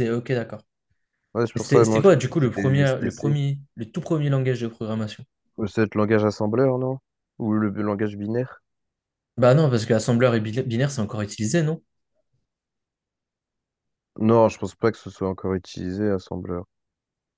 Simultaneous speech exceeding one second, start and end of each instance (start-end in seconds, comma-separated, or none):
1.6-3.4